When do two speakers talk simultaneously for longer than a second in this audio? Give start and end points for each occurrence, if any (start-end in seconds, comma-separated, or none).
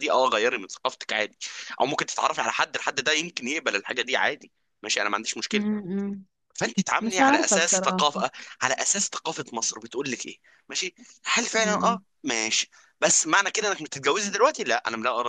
7.0-8.3